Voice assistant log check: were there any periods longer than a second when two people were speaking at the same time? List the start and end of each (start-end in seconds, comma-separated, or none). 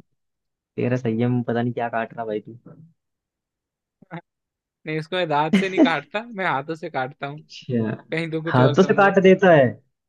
none